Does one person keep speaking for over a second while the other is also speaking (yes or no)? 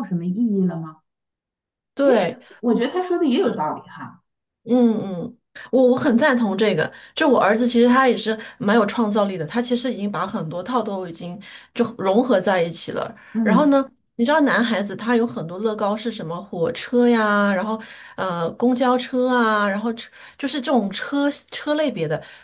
no